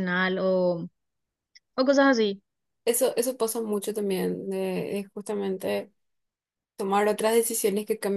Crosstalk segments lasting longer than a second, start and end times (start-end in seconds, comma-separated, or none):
none